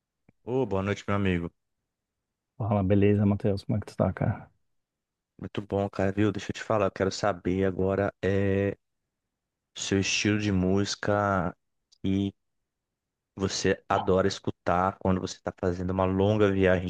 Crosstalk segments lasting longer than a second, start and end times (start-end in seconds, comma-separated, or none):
none